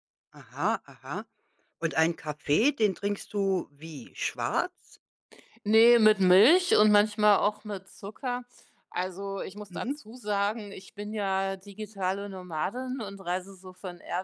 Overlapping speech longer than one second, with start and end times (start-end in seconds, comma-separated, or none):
none